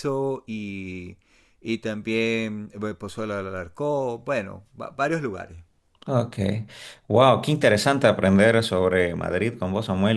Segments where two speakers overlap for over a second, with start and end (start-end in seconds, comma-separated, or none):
none